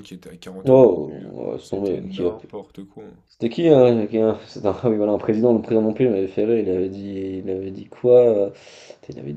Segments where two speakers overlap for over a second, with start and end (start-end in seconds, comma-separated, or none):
0.7-2.3